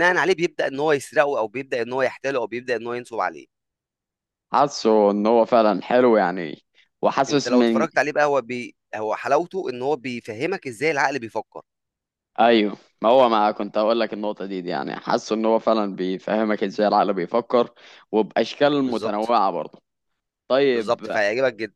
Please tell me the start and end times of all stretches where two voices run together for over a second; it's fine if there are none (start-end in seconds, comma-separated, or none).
none